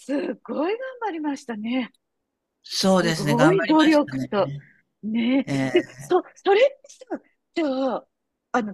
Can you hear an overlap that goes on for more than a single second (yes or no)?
yes